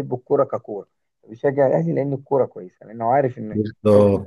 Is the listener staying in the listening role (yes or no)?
no